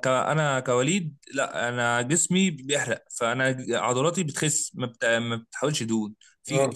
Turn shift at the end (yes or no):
no